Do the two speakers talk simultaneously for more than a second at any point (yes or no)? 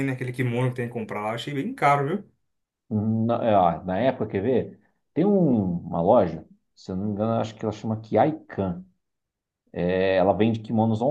no